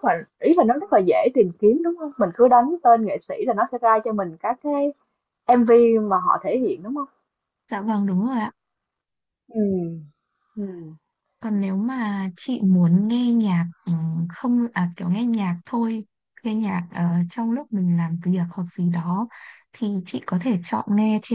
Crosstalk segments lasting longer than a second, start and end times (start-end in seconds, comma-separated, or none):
none